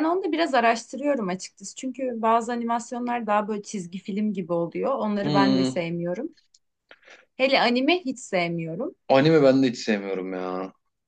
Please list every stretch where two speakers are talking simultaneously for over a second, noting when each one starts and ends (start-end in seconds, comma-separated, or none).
none